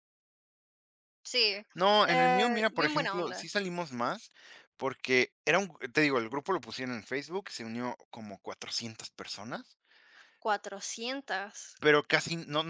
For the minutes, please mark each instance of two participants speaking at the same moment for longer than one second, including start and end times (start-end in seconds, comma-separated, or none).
2.0-3.4